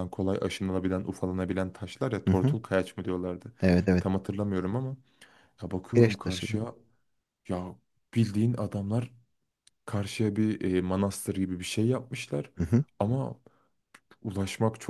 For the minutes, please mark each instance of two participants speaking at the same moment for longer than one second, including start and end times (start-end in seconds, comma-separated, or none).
none